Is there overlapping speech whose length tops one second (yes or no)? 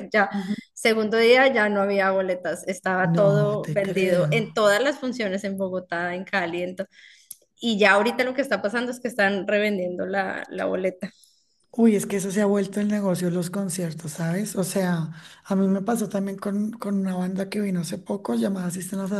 yes